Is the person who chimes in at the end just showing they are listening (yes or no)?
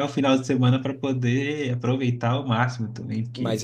no